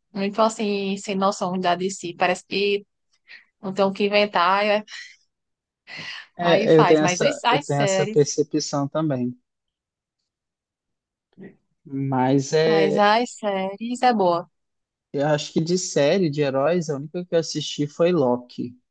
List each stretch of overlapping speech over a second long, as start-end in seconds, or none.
6.4-8.4